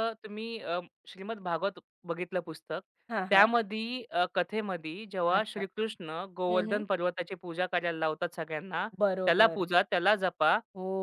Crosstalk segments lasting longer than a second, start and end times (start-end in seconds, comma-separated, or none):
none